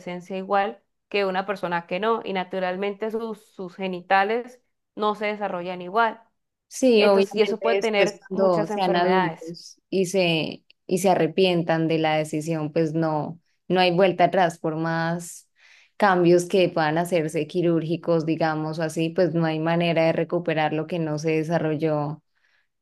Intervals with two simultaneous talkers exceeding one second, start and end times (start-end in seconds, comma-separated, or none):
6.9-9.6